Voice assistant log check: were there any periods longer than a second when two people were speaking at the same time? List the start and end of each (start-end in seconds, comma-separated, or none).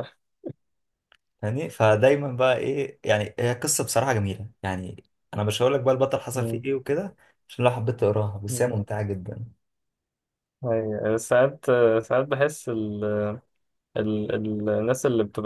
none